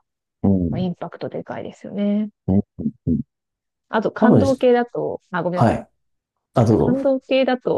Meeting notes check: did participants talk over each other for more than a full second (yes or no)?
no